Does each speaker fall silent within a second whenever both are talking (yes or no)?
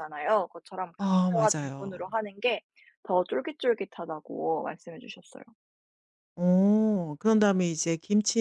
no